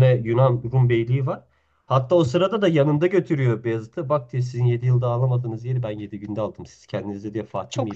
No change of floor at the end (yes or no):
yes